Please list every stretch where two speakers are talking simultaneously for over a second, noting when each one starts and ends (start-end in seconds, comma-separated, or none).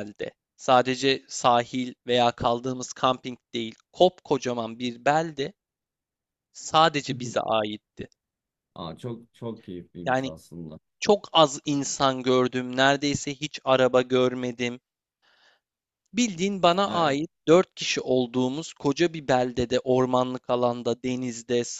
none